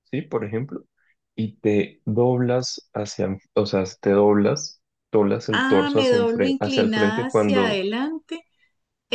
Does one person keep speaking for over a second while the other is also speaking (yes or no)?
yes